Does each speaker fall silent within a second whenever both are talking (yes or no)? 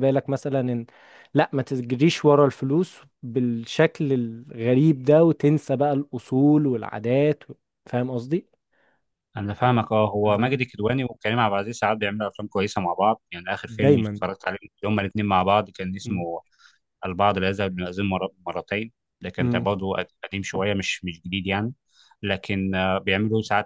yes